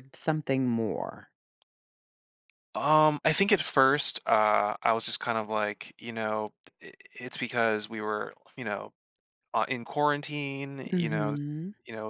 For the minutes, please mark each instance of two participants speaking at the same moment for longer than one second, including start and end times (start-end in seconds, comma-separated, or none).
none